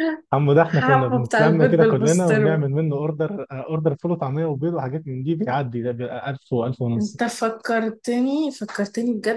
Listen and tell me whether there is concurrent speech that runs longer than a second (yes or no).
yes